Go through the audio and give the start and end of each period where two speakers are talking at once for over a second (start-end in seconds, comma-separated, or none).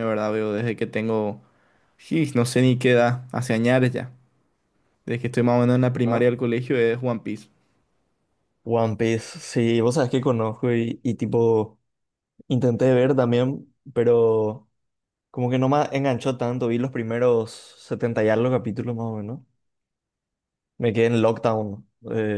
none